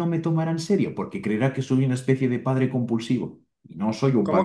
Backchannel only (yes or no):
no